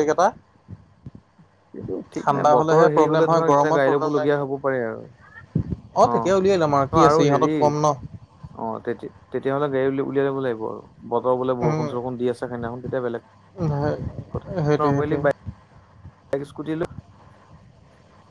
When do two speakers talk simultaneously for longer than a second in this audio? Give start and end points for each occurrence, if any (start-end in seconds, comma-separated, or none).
2.2-4.3